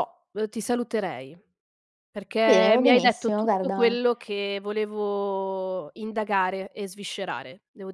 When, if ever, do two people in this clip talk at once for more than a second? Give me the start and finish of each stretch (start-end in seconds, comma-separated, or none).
2.4-4.0